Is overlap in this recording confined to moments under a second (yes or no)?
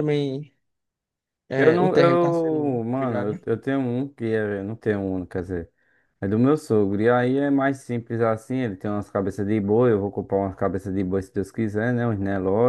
no